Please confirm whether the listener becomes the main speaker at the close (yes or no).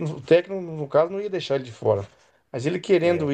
no